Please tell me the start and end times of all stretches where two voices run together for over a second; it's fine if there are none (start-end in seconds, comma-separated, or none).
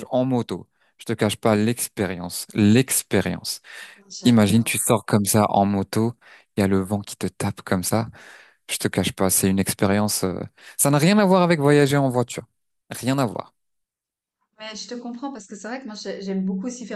none